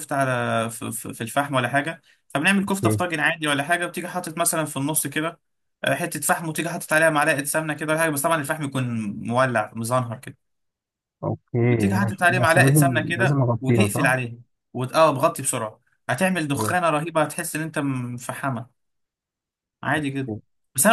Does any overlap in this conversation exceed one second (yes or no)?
yes